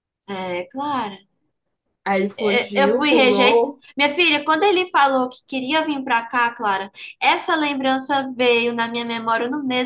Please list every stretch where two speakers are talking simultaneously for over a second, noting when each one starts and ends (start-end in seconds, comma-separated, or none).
2.4-3.8